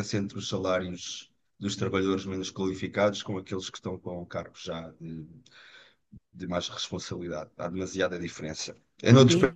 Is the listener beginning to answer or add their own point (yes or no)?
no